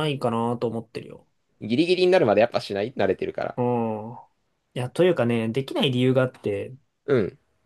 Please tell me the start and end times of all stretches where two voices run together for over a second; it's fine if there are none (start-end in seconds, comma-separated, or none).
none